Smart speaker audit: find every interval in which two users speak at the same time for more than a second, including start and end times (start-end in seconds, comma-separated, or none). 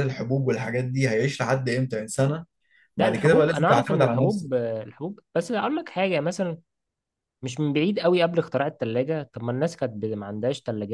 3.0-4.5